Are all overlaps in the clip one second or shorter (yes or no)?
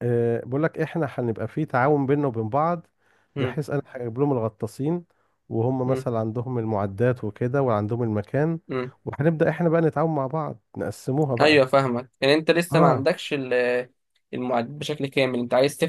yes